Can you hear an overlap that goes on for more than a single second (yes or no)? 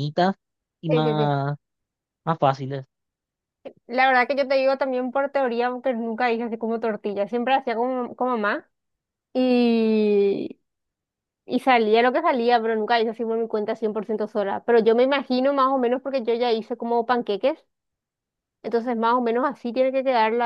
no